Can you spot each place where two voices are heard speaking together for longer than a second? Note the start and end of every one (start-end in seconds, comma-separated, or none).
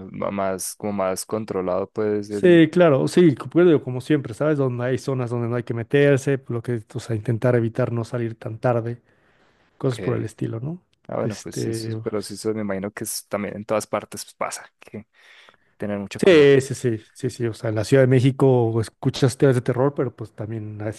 11.2-12.5